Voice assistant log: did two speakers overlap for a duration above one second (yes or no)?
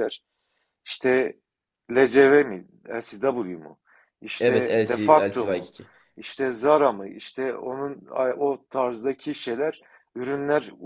yes